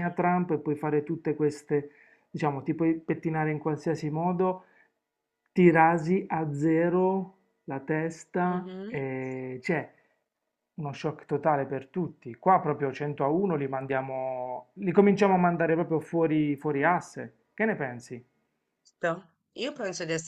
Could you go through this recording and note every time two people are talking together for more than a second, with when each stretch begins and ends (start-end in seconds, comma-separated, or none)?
none